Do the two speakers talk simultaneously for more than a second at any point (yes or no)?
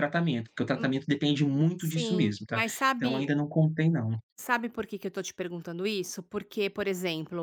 yes